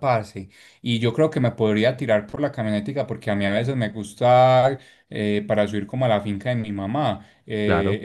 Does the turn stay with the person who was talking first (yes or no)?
yes